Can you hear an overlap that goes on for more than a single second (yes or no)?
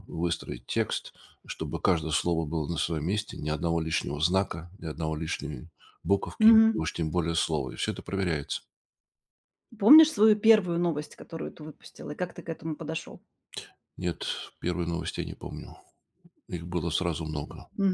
no